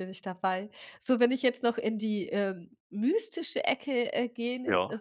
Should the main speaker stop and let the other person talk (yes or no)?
no